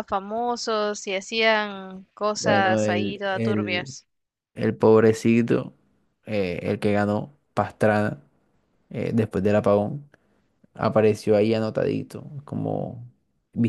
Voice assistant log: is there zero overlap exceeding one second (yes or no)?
no